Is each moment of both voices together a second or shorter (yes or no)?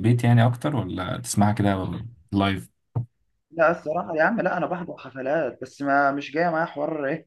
yes